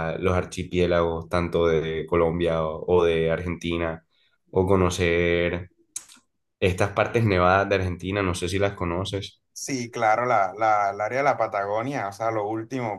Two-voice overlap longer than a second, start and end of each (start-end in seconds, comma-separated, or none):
none